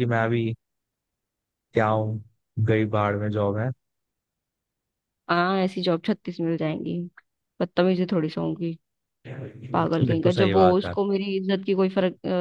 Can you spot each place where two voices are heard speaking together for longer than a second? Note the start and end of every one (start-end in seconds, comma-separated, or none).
9.7-10.9